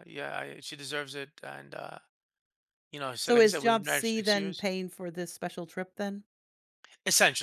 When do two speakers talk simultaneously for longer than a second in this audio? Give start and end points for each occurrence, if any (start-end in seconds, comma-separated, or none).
3.2-4.7